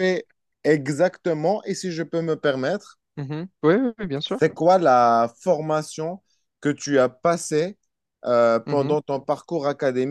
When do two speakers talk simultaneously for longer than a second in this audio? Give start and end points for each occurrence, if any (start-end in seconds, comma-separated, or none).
none